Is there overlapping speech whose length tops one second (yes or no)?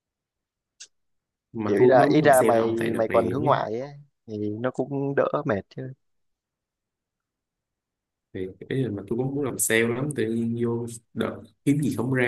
yes